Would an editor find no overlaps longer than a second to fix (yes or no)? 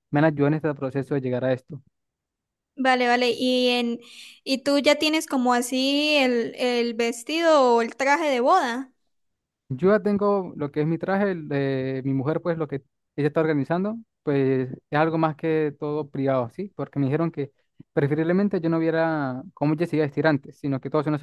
yes